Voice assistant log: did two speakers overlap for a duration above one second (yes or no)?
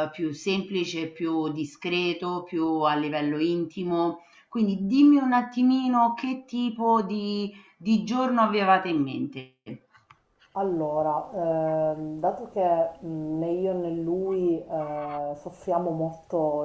no